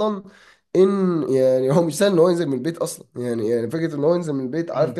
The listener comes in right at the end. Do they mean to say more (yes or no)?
no